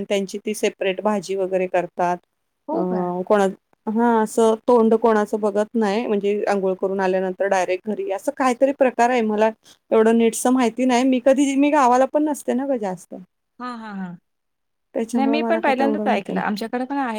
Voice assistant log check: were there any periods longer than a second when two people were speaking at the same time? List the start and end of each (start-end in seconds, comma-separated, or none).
15.2-16.4